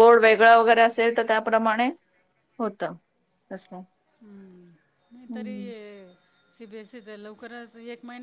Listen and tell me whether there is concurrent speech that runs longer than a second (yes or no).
no